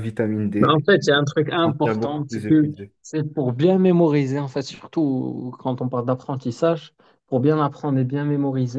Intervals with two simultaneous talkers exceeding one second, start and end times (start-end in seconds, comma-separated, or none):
0.6-2.9